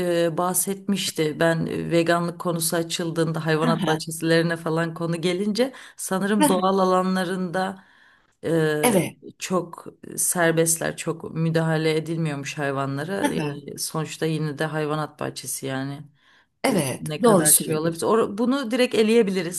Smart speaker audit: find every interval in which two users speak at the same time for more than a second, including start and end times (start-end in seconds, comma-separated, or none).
16.7-18.1